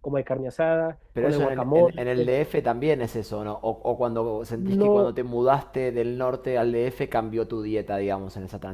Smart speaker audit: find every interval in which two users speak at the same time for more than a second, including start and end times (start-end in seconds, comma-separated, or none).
1.1-2.3